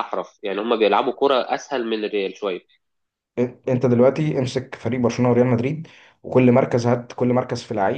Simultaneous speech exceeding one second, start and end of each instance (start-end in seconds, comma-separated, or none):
none